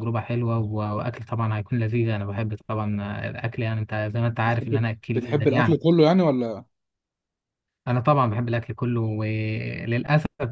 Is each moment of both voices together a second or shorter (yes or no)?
no